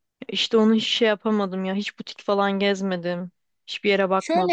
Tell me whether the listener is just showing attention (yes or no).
no